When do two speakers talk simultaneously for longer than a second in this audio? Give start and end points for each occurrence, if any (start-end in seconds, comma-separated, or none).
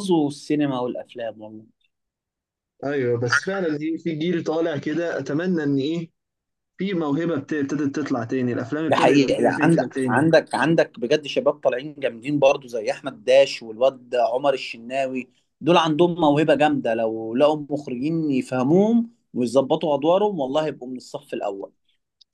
8.9-10.3